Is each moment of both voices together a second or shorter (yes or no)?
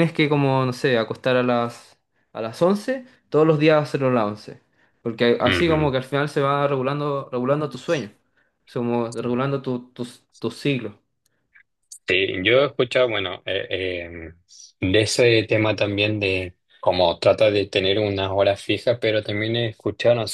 yes